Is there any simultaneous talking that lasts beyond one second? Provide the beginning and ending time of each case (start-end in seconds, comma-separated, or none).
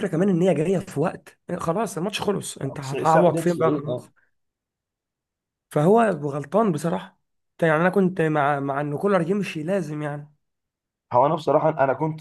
2.8-4.1